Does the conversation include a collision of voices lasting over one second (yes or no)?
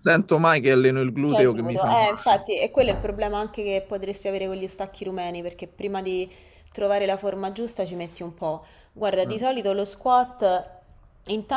yes